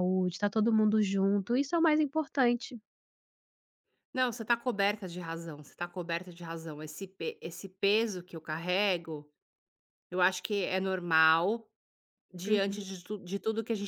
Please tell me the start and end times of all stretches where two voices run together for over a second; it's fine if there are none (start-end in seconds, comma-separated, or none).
none